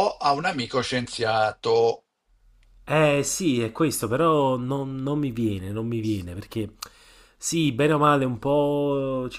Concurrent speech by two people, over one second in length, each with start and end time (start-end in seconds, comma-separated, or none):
none